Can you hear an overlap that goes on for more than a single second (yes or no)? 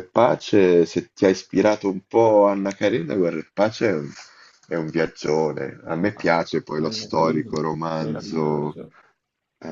yes